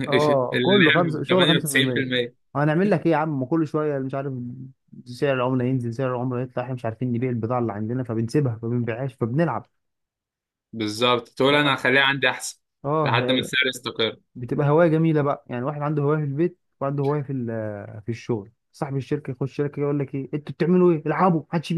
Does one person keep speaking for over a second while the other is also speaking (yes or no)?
yes